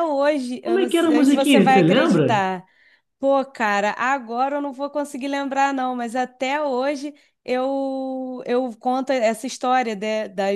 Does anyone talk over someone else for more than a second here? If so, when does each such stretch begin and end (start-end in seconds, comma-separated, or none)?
0.6-2.4